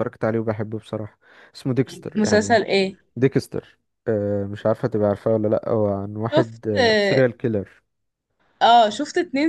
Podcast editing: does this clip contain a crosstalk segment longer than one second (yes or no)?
no